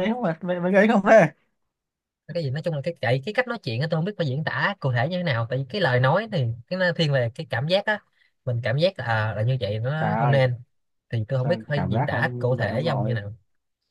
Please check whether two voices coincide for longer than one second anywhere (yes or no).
yes